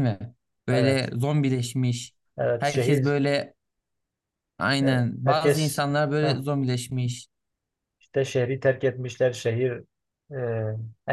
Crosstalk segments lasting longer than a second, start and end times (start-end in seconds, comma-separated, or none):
4.8-6.4